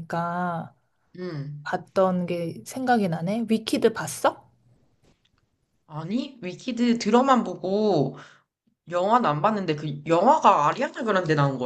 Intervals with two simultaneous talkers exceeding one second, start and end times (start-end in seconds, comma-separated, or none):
none